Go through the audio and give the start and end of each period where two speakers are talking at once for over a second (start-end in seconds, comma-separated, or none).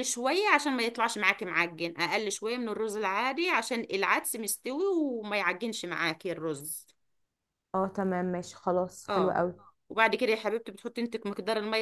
none